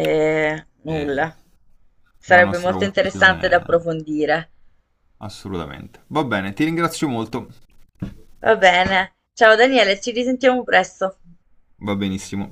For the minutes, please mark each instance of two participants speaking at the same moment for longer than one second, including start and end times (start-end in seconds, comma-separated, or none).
2.2-3.8